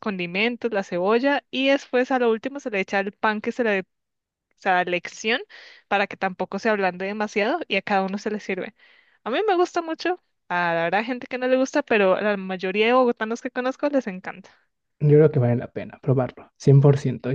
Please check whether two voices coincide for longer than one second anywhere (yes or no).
no